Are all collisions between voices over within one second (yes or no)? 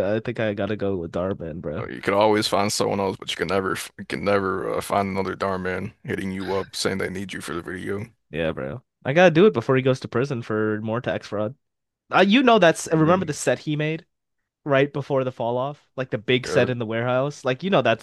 yes